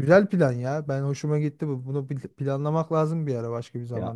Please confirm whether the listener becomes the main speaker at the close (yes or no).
yes